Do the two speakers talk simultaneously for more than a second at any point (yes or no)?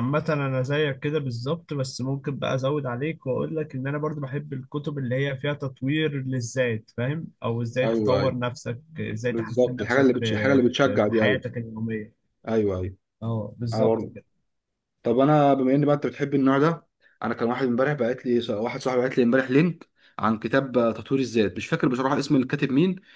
yes